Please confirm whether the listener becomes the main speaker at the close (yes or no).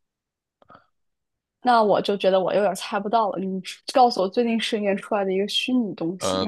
yes